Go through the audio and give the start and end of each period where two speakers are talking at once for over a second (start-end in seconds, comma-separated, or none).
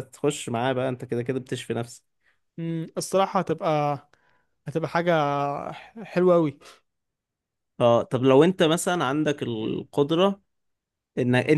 none